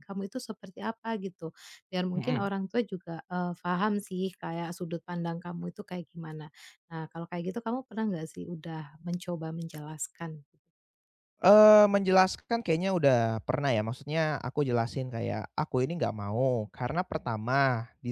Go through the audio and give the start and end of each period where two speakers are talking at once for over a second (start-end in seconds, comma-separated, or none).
none